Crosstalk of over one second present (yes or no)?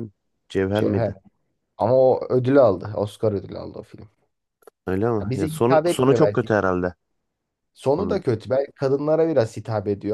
yes